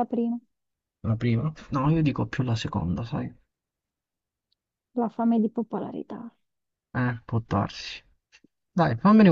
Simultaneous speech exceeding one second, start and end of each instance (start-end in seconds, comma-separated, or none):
none